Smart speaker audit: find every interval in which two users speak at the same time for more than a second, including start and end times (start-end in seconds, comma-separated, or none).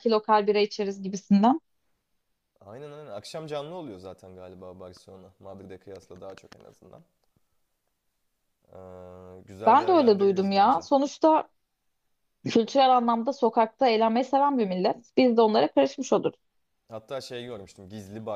9.7-10.9